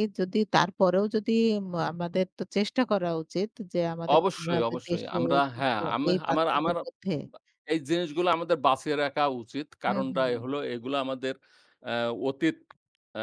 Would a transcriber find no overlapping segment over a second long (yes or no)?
no